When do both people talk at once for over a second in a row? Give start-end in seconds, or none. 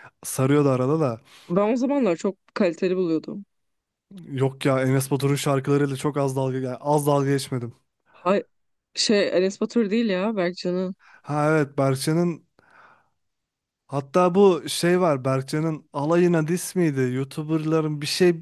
none